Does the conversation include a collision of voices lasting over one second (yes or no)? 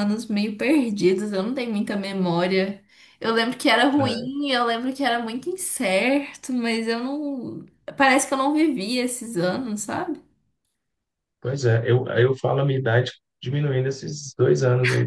no